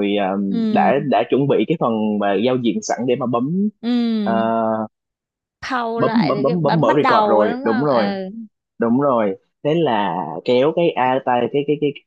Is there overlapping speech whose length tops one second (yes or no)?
yes